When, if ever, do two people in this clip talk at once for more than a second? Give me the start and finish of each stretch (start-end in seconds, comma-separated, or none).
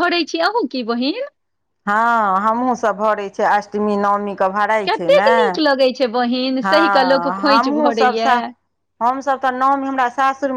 6.7-8.4